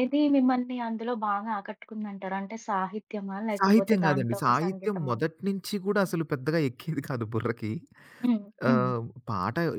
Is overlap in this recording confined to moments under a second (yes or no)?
no